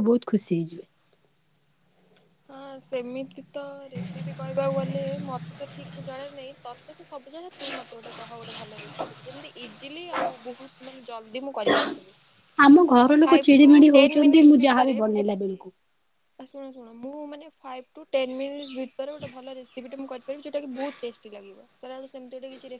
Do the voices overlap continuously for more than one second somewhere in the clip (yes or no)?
yes